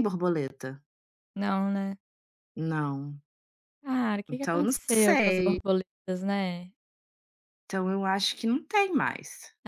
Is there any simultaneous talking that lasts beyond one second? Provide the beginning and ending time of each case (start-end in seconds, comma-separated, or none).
4.3-5.6